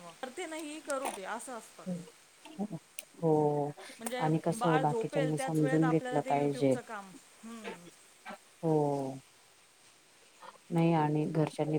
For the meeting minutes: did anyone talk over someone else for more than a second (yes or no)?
yes